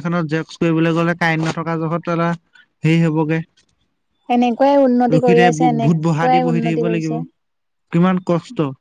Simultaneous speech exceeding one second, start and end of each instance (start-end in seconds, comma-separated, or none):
5.1-7.2